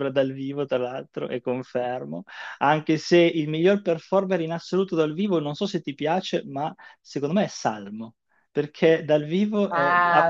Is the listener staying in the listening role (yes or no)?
no